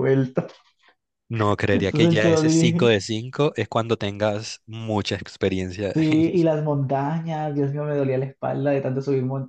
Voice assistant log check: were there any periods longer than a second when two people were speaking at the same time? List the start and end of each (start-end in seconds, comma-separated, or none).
1.7-2.9